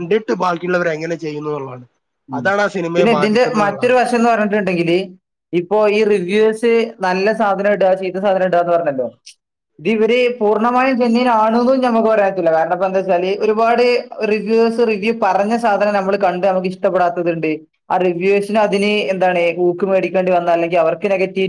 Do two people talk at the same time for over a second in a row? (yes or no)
no